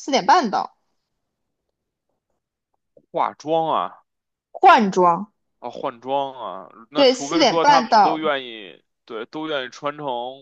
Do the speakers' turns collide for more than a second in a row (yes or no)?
yes